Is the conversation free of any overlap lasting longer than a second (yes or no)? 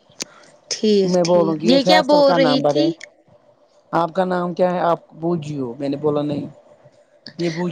no